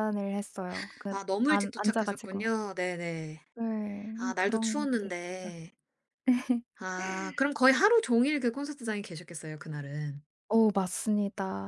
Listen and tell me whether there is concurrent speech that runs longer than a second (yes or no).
yes